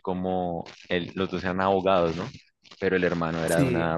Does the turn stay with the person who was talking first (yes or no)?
yes